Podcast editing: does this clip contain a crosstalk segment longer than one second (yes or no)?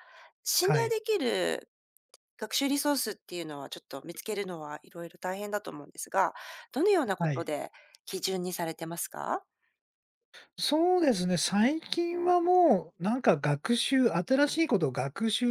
no